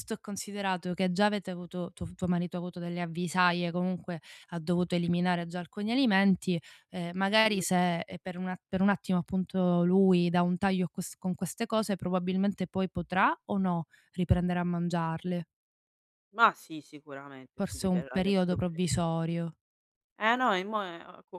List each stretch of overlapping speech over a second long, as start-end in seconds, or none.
17.5-18.8